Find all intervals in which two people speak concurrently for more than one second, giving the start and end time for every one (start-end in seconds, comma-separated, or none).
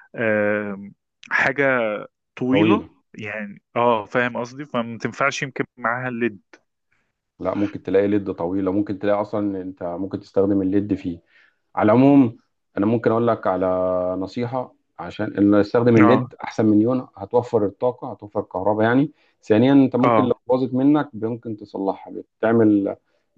none